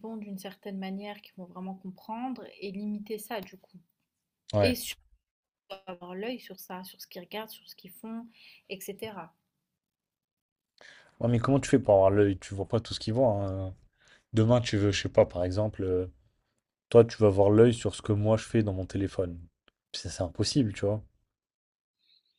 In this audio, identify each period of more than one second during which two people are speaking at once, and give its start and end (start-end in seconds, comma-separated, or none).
none